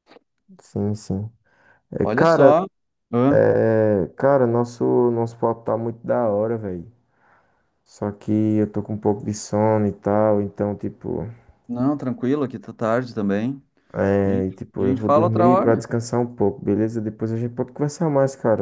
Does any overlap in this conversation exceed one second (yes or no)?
yes